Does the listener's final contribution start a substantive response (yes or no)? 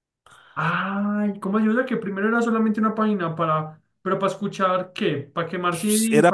yes